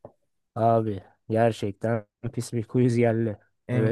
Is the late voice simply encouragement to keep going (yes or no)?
no